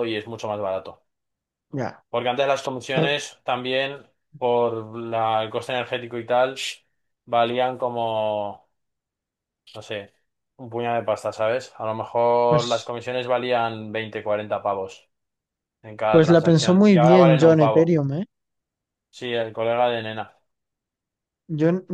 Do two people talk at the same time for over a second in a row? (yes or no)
yes